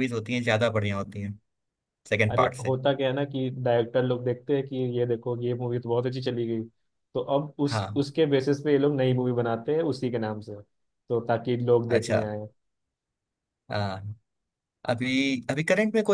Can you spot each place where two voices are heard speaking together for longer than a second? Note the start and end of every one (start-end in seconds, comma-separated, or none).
none